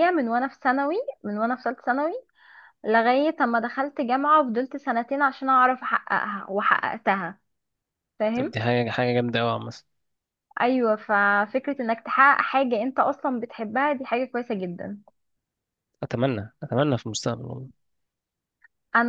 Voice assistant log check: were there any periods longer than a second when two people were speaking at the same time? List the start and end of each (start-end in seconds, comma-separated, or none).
none